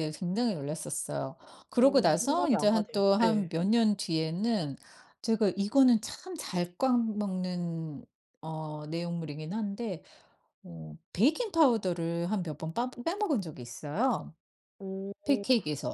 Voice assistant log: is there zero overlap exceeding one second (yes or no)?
no